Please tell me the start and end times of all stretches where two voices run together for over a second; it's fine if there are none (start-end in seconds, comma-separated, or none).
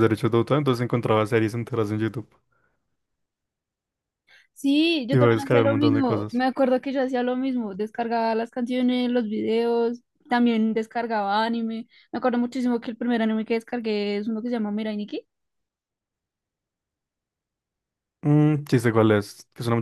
5.1-6.4